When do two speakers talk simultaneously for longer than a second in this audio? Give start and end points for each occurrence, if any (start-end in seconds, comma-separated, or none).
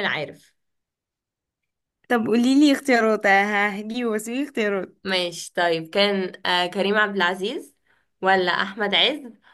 none